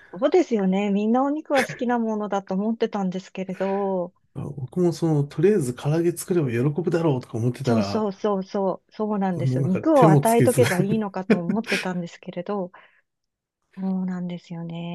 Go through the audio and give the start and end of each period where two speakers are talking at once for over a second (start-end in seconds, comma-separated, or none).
9.3-10.6